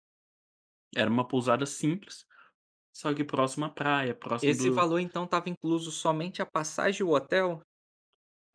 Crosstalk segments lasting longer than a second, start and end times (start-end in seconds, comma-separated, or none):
none